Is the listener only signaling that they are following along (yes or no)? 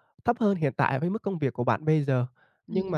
yes